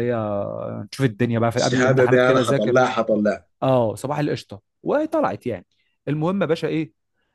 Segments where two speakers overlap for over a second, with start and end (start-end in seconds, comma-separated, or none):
1.5-2.8